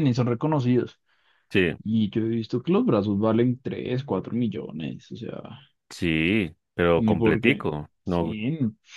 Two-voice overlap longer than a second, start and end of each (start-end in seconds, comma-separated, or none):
7.0-8.3